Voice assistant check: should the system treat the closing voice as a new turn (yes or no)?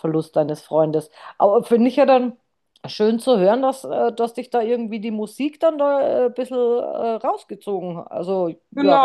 yes